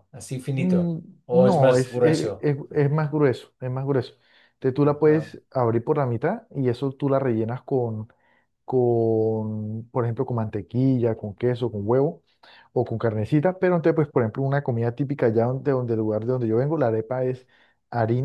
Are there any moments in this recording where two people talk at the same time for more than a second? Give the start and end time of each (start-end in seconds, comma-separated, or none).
0.5-2.5